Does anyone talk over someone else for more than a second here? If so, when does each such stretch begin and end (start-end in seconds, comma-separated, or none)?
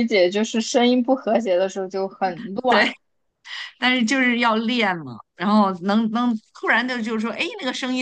none